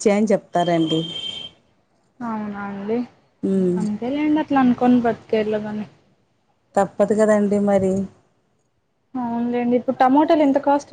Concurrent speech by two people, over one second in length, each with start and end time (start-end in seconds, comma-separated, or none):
none